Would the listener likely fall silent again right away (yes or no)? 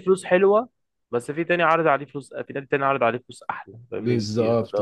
no